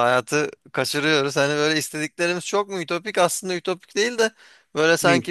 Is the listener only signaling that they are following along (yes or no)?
yes